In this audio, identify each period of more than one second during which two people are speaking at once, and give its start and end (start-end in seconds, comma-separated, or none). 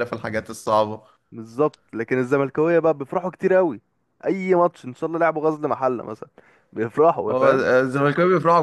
none